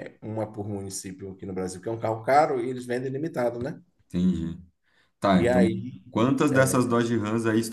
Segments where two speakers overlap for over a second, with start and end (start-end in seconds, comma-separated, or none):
none